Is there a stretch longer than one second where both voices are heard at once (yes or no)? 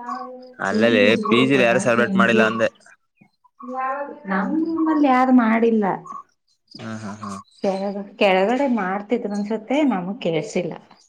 yes